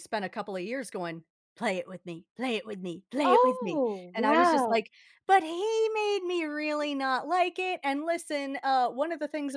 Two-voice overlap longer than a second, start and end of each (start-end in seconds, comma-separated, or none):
3.2-4.8